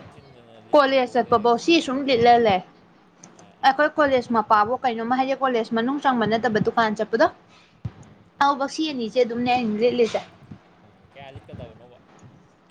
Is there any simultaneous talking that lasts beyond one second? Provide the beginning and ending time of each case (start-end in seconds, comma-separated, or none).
0.7-2.3